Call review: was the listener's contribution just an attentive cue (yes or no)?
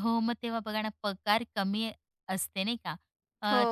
yes